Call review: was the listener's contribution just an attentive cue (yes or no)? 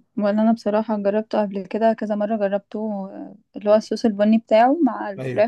yes